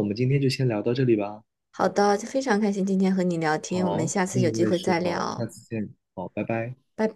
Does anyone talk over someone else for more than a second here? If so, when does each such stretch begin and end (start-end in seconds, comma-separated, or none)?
3.7-5.5